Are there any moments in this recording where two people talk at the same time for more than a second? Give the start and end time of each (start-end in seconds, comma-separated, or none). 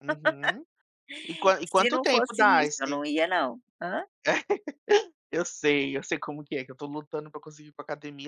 1.6-3.0